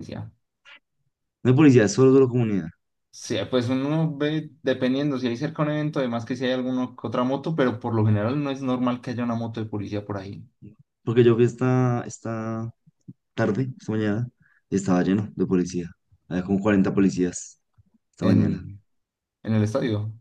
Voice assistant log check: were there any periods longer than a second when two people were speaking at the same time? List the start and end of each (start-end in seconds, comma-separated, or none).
none